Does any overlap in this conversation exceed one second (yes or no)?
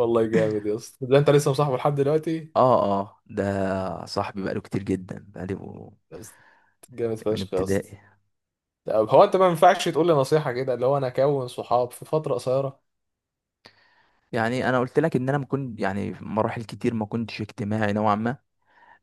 no